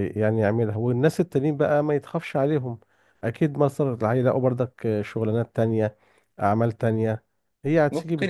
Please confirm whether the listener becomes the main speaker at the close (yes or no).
yes